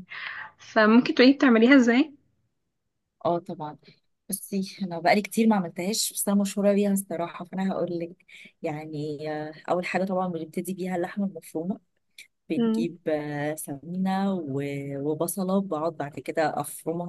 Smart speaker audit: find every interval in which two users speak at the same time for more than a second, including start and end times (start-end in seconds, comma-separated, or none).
none